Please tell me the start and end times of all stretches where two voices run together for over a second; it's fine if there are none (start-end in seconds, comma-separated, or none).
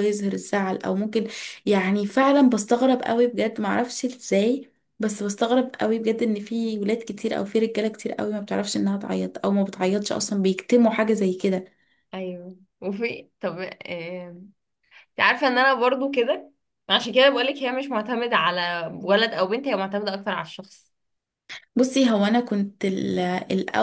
none